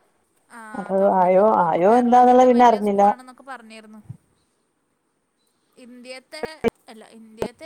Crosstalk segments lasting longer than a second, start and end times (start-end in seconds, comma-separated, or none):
0.8-3.0